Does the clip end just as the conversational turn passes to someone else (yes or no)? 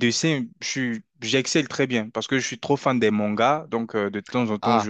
no